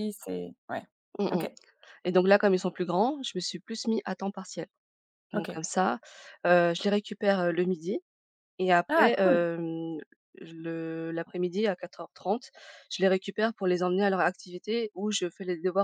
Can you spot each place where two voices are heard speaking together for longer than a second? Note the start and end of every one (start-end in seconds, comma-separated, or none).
none